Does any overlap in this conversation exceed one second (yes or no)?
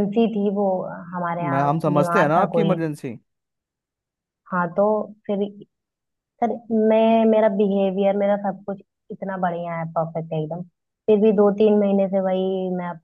yes